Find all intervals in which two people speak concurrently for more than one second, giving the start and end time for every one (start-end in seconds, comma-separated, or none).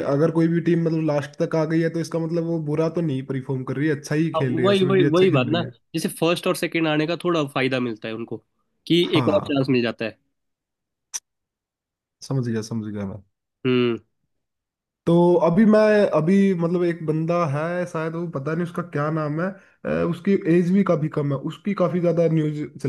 4.3-5.7